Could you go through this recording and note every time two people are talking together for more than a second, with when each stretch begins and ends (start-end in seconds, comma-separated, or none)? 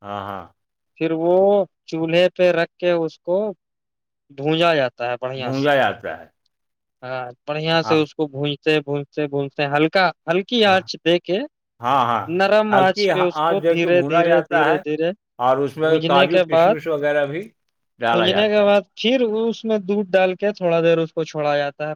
12.7-14.8